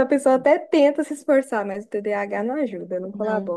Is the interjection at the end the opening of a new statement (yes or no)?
yes